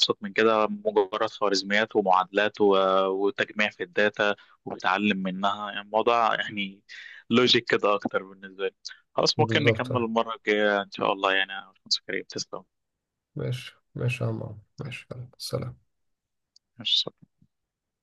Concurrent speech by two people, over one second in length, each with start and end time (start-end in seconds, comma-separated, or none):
none